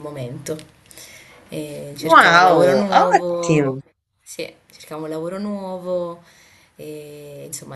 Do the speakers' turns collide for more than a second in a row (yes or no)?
yes